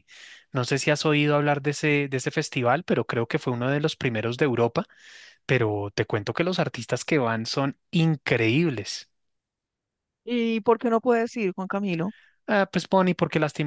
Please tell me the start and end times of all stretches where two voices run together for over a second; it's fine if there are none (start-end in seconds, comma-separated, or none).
none